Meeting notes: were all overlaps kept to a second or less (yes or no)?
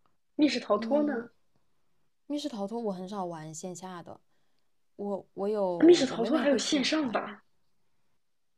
no